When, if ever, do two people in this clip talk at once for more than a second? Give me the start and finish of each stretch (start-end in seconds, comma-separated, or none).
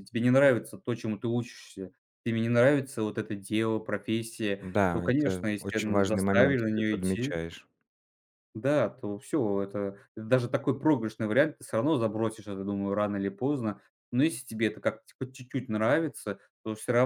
4.6-7.4